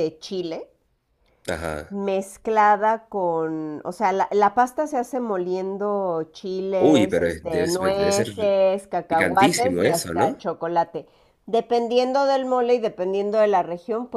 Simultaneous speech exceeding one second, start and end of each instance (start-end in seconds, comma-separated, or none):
6.8-8.3, 9.1-10.4